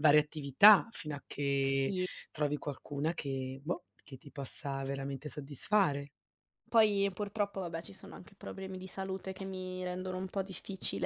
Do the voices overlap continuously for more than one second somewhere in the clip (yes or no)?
no